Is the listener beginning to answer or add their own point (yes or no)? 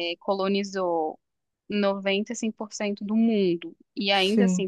no